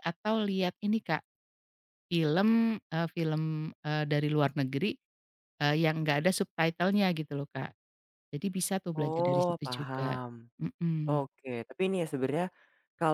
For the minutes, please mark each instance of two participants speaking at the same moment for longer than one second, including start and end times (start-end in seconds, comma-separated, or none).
9.0-10.2